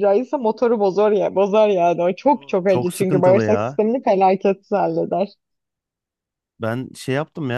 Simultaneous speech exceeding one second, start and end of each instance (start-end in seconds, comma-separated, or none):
2.3-3.8